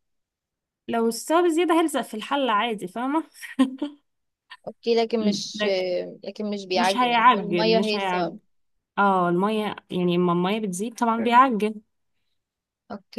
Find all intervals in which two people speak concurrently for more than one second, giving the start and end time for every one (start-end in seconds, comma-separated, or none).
6.7-8.4